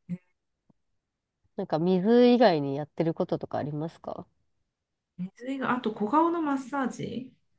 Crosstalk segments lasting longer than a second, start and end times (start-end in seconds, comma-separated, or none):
none